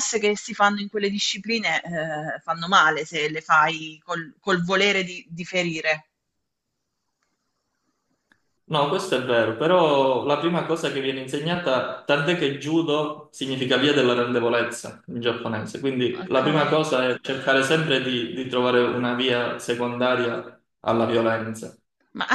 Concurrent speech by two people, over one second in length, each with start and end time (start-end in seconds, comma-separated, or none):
none